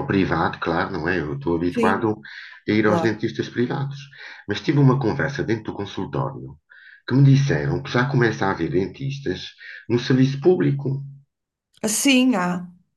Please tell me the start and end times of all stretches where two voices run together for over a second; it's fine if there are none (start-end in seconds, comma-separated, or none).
none